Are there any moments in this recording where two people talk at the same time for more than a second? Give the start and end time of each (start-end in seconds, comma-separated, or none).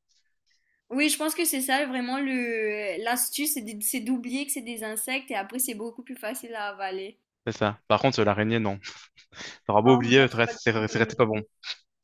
9.8-11.3